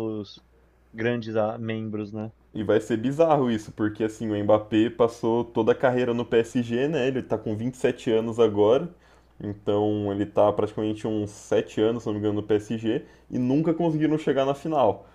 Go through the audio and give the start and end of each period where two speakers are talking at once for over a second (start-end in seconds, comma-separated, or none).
none